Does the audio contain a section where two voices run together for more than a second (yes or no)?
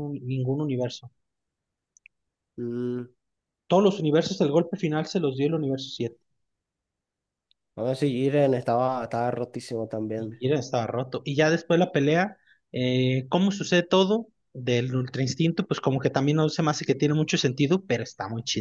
no